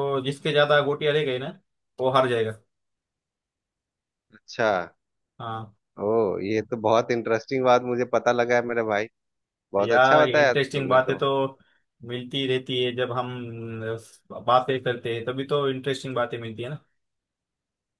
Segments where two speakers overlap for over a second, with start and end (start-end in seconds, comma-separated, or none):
9.8-11.2